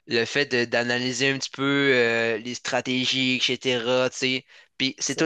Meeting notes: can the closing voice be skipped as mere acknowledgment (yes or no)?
yes